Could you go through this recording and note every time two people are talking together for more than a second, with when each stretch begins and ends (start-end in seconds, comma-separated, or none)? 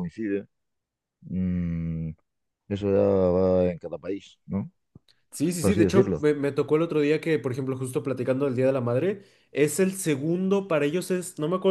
none